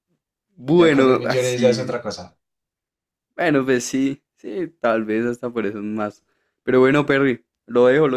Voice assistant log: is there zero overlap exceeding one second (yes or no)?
no